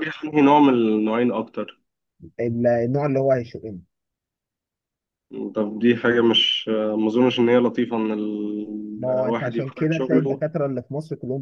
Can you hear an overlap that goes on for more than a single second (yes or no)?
yes